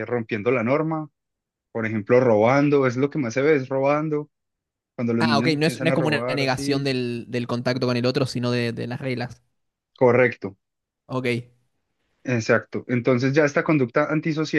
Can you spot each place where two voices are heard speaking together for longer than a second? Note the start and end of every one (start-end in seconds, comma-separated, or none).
5.2-6.9